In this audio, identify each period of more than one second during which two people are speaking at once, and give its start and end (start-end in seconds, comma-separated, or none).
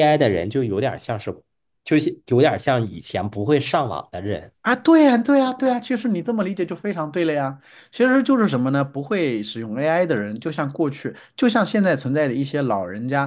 none